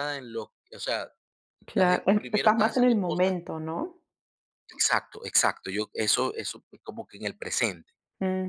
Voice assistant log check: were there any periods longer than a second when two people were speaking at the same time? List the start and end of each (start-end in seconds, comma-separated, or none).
1.7-3.4